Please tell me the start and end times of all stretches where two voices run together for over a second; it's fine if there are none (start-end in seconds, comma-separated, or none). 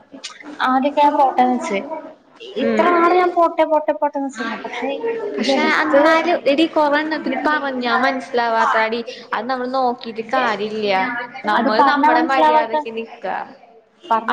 11.6-13.1